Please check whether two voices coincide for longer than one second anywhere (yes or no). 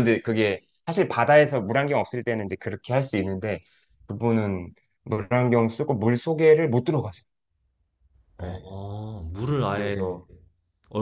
no